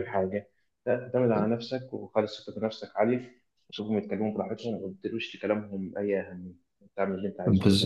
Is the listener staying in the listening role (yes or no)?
no